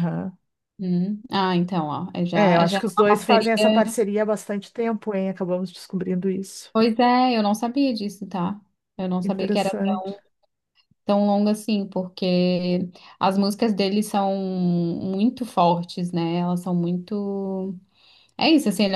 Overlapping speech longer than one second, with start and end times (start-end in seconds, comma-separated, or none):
2.3-3.8